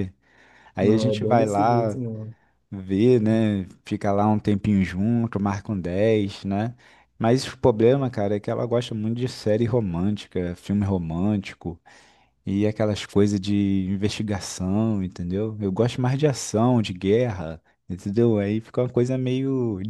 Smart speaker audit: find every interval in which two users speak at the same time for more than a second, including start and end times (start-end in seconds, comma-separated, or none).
0.8-2.0